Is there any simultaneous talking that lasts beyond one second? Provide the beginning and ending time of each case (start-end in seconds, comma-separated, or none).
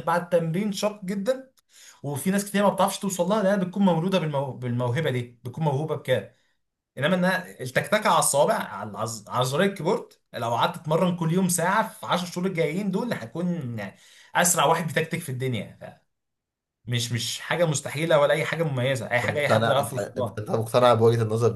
19.2-20.4